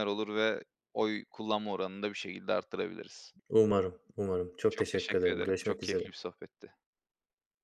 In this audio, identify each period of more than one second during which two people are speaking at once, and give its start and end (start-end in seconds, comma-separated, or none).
4.7-6.1